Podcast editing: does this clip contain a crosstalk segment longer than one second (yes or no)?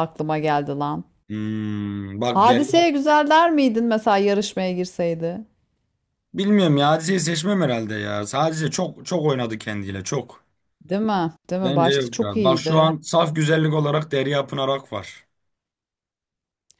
yes